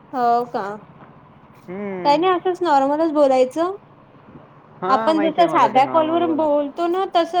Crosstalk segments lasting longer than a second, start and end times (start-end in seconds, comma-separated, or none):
4.9-6.5